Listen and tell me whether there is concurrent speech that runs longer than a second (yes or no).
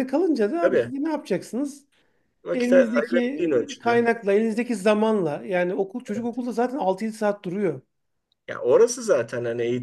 yes